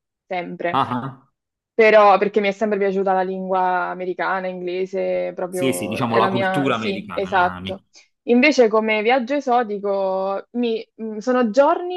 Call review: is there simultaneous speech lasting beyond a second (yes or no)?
yes